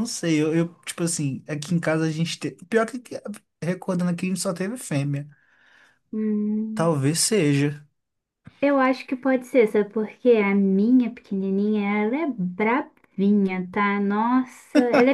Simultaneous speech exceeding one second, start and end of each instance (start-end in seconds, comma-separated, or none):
none